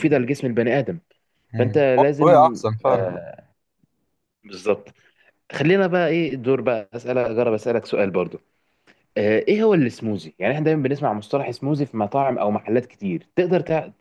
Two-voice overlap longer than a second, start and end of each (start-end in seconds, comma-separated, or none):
1.6-3.1